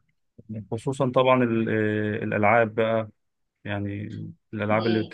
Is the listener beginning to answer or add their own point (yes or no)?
no